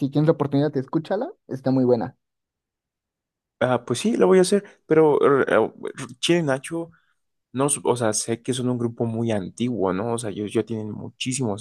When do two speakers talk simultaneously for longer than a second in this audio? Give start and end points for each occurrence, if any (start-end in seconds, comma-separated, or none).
none